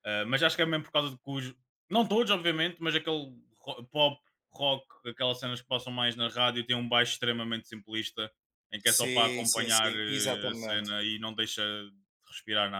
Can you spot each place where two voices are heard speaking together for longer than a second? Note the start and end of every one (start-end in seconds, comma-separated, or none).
8.9-10.9